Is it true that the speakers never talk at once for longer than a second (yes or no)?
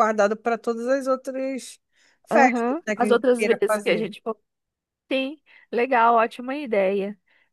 no